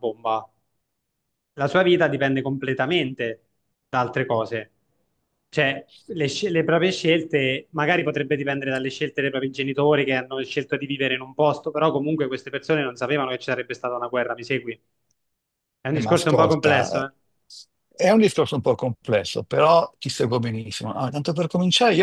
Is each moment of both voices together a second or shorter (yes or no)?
no